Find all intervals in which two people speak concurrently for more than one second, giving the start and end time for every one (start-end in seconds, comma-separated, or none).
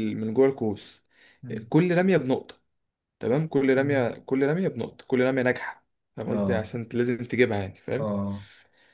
none